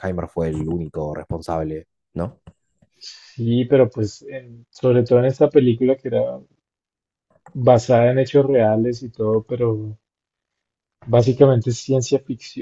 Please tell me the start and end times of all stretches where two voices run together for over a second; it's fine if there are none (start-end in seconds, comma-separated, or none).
none